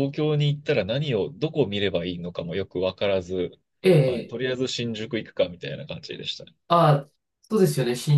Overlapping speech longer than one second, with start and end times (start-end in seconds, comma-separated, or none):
none